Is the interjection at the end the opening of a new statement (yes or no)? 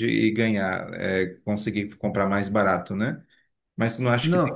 no